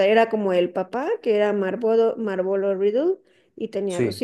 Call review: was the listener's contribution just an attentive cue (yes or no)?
yes